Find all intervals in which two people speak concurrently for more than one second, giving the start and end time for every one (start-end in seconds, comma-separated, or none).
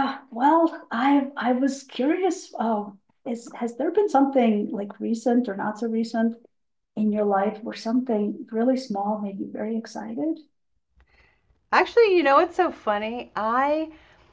none